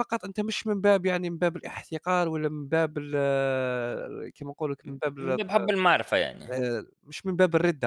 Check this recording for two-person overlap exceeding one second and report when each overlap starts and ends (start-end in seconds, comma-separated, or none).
none